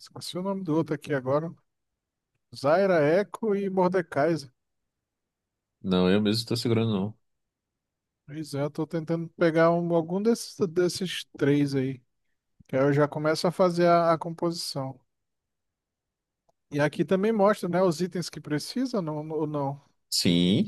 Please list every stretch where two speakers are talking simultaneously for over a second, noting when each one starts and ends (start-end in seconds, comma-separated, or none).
none